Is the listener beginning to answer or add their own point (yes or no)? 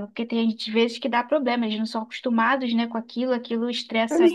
yes